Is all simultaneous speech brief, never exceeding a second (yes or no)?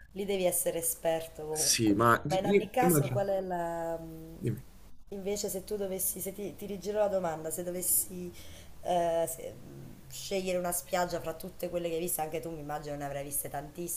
no